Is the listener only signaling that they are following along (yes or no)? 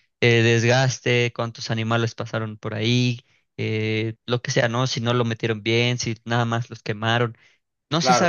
yes